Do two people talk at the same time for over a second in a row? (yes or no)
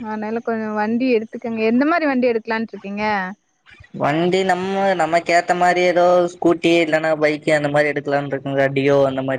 no